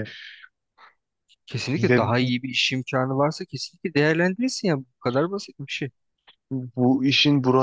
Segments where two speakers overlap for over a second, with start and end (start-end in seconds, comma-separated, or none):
none